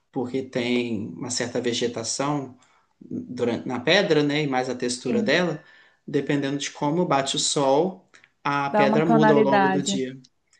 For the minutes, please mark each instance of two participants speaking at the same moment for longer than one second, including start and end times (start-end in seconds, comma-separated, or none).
8.7-10.0